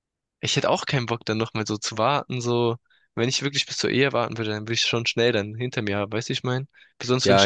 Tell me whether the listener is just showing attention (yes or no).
no